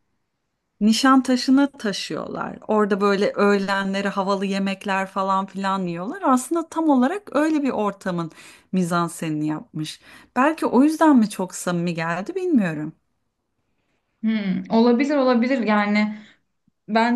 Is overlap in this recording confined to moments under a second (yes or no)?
yes